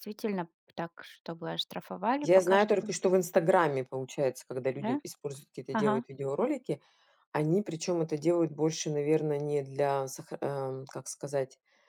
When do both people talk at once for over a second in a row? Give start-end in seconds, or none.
none